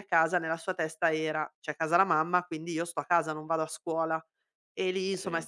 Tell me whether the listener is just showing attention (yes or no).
yes